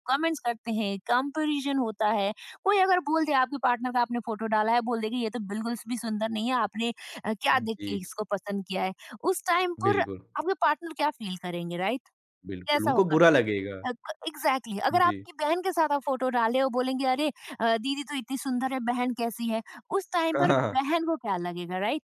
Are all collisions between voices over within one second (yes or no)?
yes